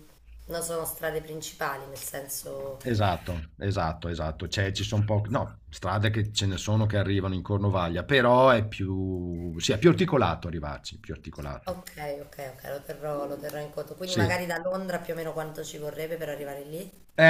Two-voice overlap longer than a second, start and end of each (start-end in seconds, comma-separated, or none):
none